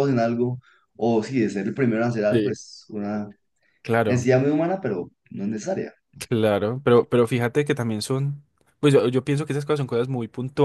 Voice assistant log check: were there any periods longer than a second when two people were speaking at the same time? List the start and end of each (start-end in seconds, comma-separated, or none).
none